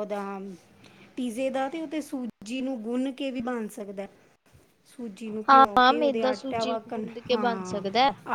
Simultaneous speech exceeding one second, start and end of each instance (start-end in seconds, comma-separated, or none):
5.5-7.8